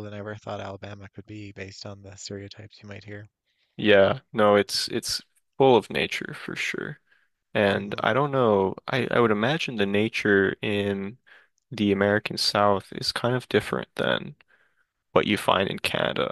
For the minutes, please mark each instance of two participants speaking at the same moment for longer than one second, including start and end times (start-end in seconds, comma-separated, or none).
none